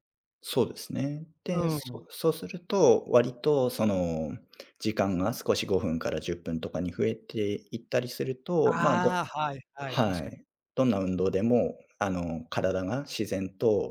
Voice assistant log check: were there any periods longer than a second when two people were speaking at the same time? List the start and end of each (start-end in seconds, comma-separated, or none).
none